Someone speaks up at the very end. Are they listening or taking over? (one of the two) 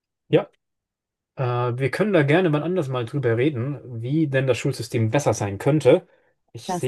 listening